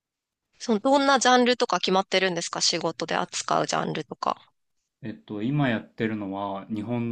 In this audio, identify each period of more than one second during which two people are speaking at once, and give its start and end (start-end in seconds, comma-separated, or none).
none